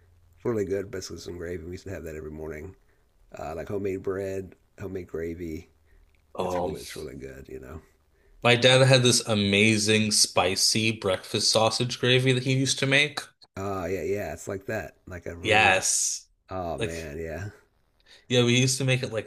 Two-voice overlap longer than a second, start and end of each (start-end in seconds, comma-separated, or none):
none